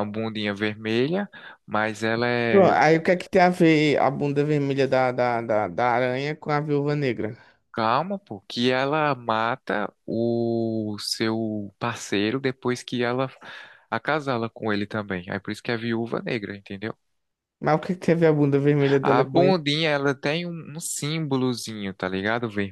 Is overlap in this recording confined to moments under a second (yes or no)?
yes